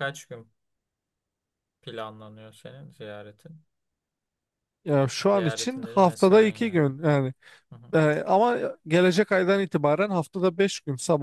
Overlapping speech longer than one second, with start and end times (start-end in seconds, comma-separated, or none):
5.3-6.9